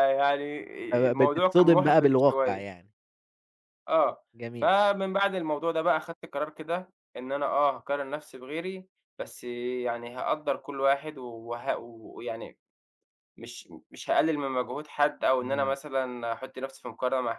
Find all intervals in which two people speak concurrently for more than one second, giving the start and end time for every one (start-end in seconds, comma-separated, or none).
1.1-2.6